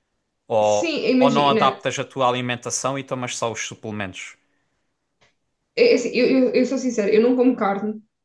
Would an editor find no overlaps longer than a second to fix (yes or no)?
no